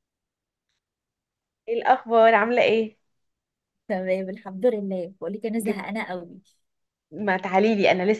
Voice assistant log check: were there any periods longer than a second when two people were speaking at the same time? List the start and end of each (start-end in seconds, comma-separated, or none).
none